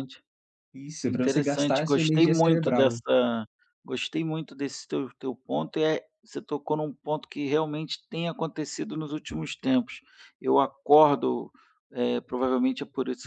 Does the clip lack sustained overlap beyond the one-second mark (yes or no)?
no